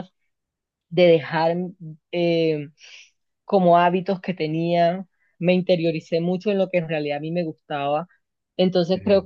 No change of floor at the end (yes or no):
yes